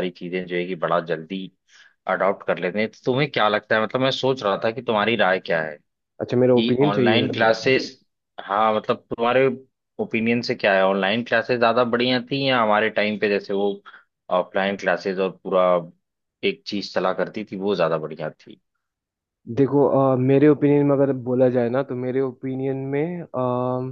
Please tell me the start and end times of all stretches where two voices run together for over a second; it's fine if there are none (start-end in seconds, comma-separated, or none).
6.3-7.8